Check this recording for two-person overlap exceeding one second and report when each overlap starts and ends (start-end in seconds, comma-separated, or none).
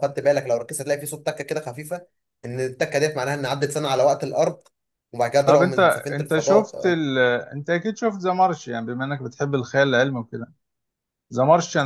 5.4-7.0